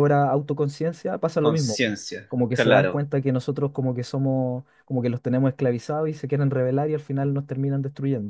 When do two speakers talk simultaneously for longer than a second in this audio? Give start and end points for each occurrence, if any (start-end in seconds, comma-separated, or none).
1.4-3.1